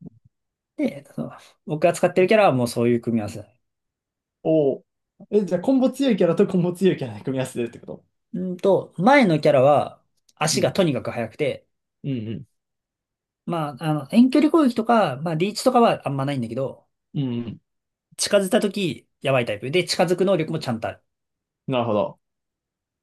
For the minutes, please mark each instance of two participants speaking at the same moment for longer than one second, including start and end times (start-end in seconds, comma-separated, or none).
none